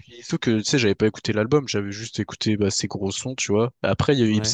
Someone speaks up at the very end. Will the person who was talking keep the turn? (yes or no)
yes